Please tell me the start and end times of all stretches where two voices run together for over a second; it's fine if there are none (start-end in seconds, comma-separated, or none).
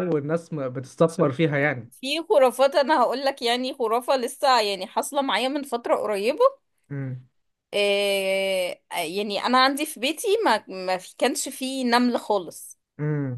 none